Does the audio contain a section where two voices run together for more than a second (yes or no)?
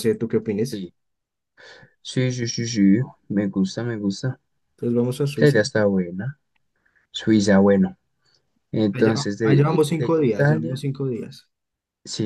yes